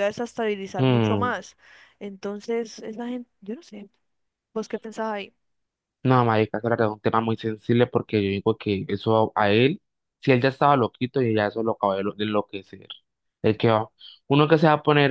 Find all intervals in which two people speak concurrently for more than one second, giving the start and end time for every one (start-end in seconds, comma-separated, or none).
none